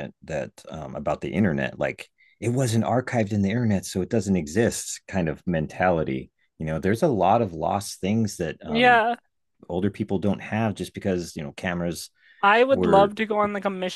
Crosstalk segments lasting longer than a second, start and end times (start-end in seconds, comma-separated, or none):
none